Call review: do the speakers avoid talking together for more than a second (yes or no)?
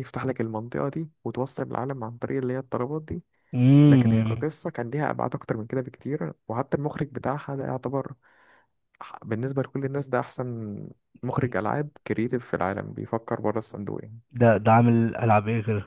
yes